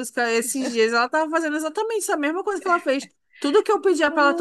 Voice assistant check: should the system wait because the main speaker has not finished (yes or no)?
yes